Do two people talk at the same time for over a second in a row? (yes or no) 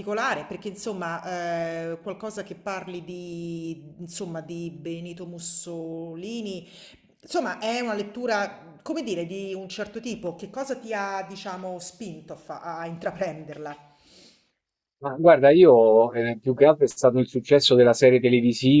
no